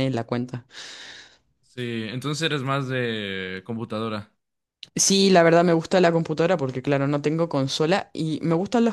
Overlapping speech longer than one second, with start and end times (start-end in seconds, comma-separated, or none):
none